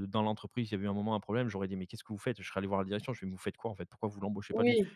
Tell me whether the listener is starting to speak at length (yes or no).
no